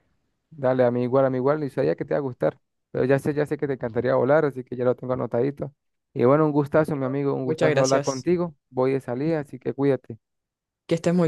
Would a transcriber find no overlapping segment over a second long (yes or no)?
no